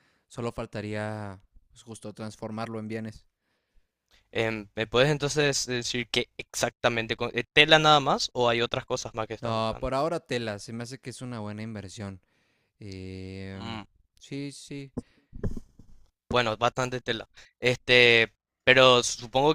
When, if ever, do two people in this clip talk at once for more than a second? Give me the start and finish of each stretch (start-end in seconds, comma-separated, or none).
none